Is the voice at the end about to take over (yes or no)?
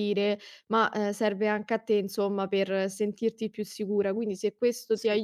no